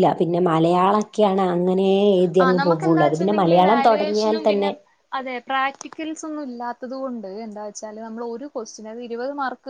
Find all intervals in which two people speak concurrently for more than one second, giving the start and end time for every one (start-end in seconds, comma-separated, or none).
2.4-4.7